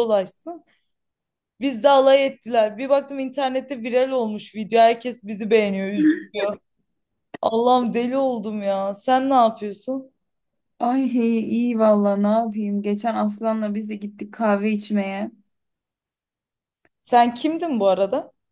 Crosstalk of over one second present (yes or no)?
no